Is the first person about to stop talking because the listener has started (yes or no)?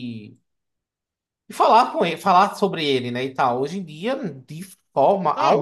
yes